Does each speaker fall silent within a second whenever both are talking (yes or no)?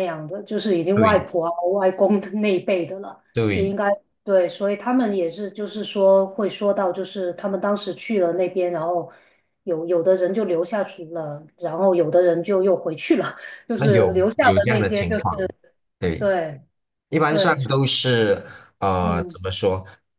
no